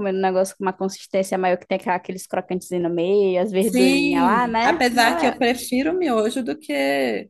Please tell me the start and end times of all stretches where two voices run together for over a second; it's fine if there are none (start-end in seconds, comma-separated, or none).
3.6-5.4